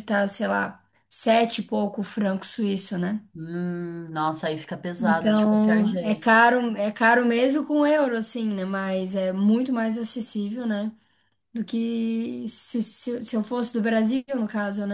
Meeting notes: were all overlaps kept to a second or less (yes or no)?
no